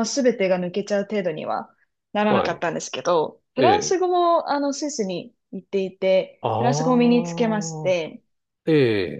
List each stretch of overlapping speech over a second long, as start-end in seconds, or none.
6.4-7.9